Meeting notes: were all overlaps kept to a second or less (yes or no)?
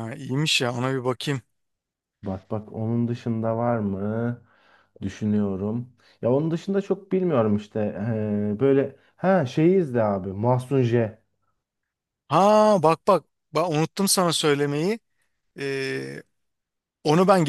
yes